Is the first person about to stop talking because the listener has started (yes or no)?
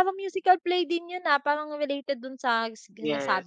yes